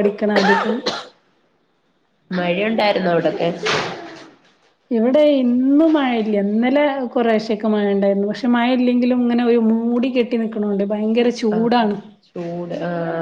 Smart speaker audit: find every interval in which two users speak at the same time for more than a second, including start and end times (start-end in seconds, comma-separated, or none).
none